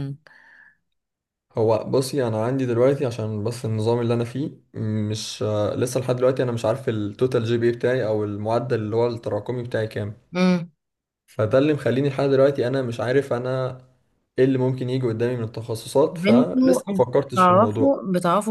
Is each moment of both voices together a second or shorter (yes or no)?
no